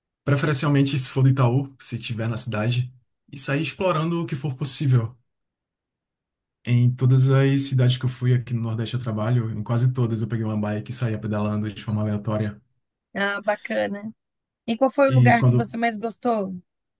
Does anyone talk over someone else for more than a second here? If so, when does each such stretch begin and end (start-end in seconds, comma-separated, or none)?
none